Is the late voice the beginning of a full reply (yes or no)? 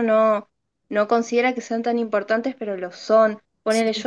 no